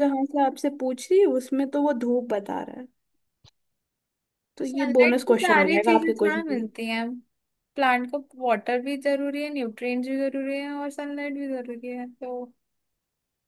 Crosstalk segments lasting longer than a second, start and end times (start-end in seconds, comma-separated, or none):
4.7-6.7